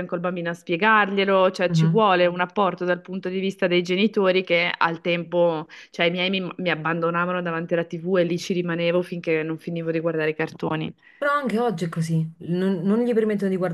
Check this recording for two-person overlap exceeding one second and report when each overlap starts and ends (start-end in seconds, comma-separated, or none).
none